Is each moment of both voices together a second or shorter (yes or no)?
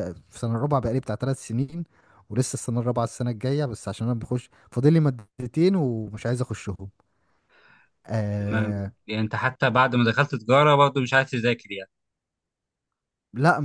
yes